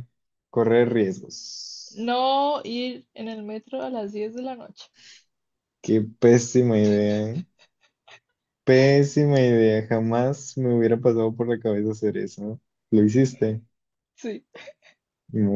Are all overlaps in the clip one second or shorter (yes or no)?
yes